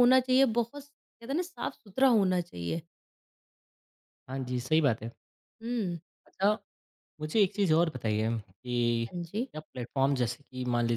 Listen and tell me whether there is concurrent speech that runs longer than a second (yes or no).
no